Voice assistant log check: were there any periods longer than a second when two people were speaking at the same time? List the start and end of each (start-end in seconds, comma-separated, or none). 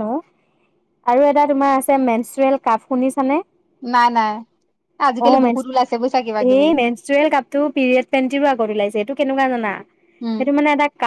5.2-6.7